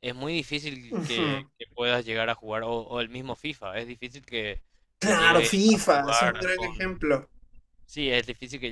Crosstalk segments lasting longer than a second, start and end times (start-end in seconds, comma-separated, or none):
5.0-6.9